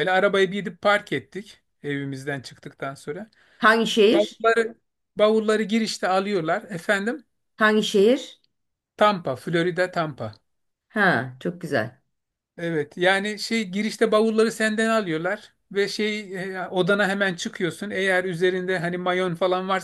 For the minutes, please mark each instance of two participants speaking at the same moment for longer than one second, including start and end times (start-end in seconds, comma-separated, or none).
none